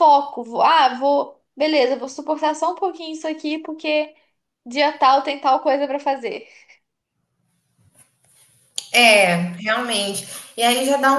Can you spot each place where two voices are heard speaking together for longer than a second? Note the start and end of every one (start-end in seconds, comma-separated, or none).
none